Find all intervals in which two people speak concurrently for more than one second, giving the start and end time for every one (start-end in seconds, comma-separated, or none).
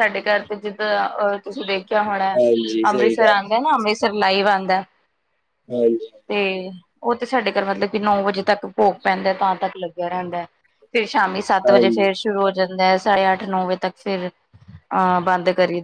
none